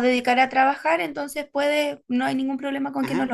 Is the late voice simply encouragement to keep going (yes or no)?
no